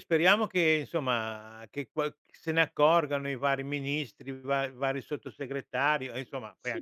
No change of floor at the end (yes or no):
no